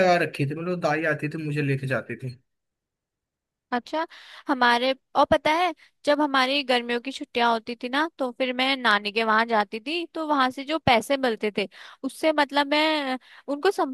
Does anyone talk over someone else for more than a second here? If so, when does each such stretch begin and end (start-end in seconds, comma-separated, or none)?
none